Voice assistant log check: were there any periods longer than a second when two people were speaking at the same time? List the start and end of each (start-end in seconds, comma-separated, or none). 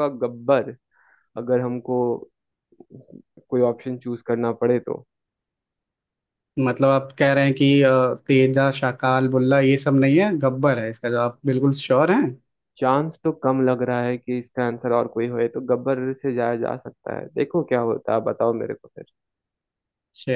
none